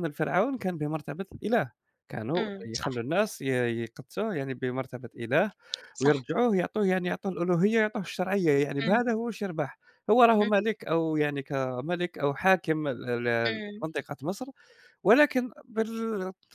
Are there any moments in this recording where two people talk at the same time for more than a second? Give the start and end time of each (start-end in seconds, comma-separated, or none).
none